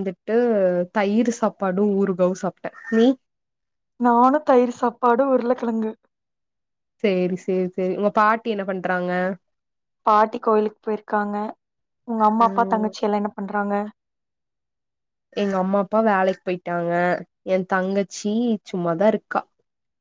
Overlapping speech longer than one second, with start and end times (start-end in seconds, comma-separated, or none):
none